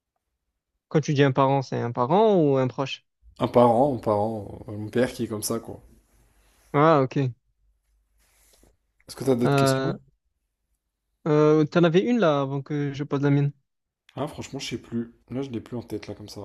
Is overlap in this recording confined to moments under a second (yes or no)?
yes